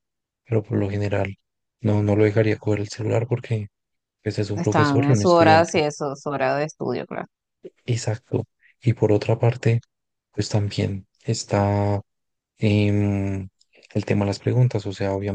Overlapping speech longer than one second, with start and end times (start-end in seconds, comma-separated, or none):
4.5-5.8